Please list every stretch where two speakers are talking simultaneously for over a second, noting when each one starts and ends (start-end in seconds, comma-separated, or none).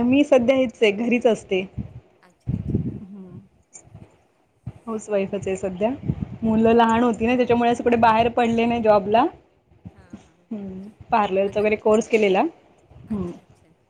none